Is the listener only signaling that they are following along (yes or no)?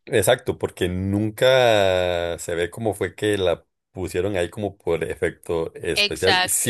yes